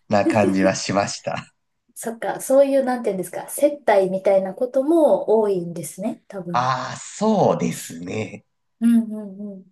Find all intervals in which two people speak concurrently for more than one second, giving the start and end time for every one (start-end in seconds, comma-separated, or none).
none